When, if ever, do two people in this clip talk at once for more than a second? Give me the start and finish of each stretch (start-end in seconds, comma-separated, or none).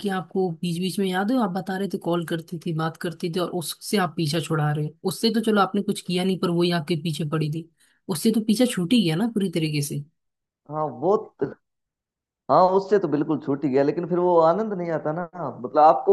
none